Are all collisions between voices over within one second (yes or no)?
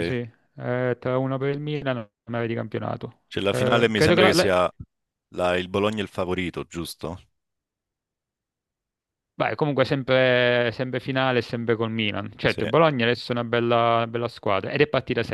no